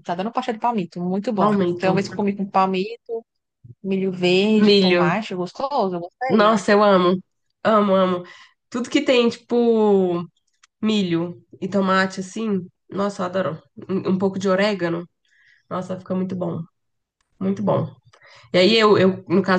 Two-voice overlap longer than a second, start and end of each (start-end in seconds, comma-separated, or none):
none